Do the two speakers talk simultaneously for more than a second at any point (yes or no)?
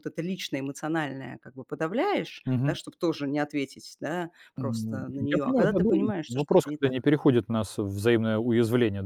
yes